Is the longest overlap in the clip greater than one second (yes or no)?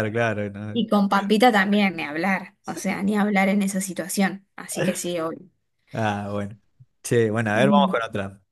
no